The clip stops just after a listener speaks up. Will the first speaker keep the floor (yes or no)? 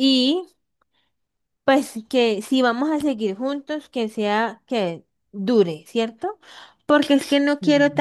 yes